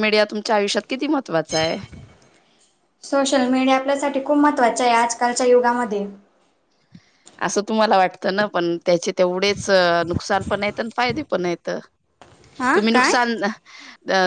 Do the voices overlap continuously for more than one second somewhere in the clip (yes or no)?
no